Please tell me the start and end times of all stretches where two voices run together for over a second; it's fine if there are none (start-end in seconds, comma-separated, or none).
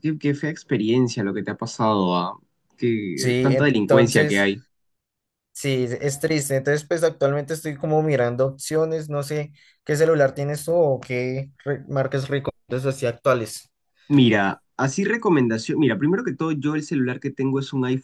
3.1-4.5